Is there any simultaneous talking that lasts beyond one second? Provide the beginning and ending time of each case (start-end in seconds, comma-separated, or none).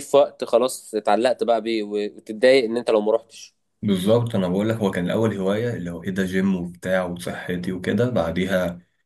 none